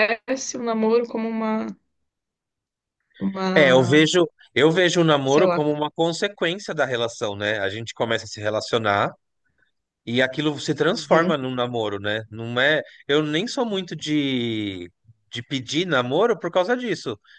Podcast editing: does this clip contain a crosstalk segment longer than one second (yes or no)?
no